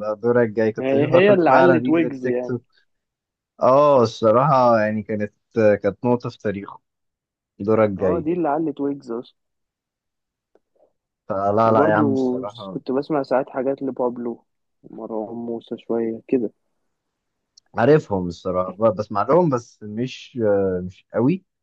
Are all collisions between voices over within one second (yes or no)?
no